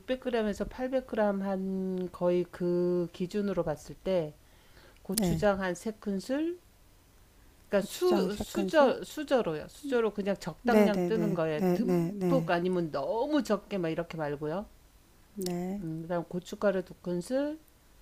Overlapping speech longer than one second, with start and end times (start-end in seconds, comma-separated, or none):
7.7-8.9, 10.6-12.5